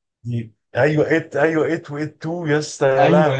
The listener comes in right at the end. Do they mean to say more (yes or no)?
yes